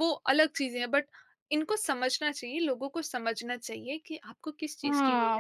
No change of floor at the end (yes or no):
no